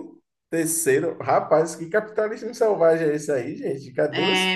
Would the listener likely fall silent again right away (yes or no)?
no